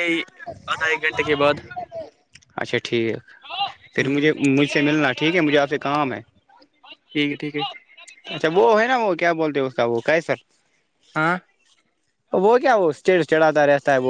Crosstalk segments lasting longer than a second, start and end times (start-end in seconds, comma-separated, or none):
none